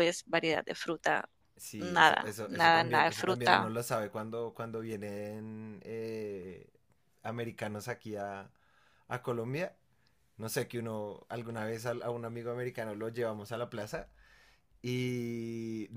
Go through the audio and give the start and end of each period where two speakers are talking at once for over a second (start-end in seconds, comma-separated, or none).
1.8-3.7